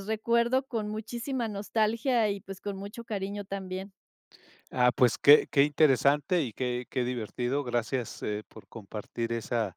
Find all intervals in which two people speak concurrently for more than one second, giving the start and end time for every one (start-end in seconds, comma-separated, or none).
none